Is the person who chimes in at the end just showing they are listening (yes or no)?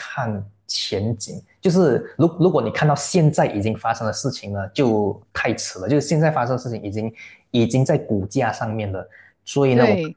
yes